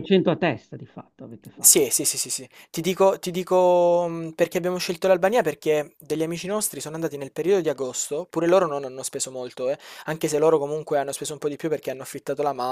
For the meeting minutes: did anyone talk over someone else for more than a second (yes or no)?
no